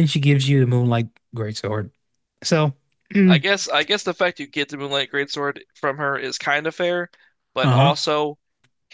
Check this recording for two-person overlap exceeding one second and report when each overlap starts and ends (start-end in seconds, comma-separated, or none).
none